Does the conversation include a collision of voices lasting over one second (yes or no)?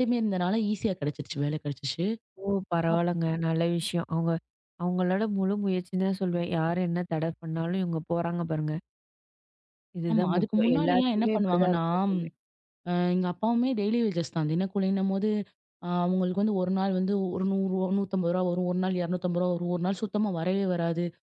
yes